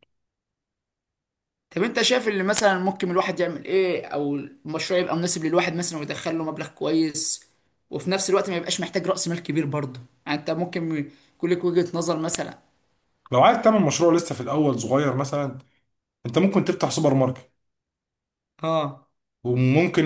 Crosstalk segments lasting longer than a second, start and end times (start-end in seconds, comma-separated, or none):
none